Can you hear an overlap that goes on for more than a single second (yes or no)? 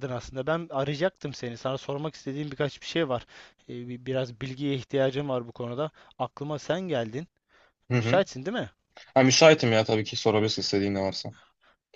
no